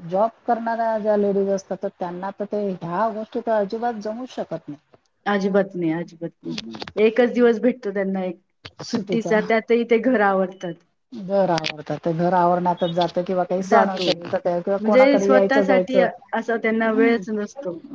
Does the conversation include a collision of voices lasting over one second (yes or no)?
yes